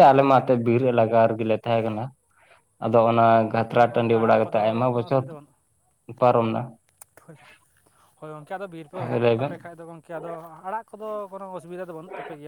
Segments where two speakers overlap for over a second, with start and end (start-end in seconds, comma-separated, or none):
3.5-5.2